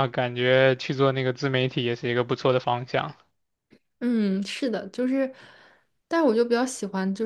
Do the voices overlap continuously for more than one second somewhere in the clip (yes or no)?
no